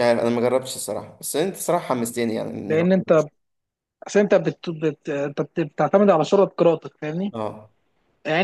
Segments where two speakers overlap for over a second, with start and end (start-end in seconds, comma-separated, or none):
none